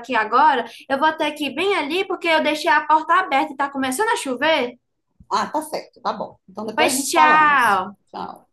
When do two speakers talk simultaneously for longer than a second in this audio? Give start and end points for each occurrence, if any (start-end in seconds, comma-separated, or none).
6.7-8.0